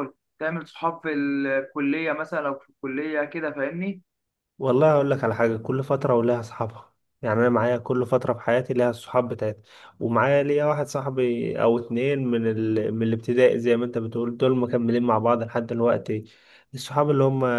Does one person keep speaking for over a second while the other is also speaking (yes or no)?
no